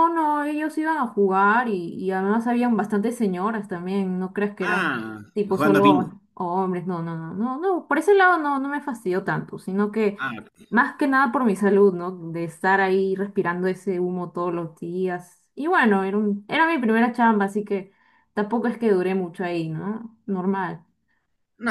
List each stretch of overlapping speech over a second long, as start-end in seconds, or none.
4.6-6.1